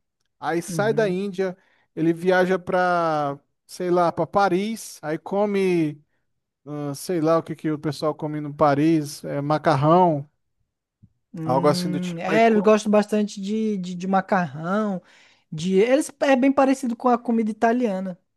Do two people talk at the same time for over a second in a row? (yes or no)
yes